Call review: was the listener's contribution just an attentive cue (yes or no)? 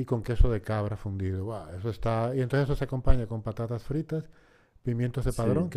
yes